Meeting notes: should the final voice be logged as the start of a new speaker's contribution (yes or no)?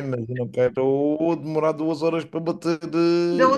yes